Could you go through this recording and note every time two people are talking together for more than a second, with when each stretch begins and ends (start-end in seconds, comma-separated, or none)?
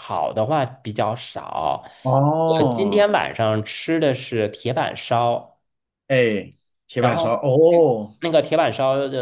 none